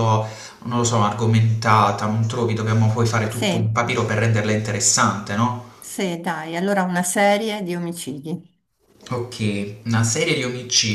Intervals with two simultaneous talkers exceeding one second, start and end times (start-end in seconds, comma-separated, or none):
none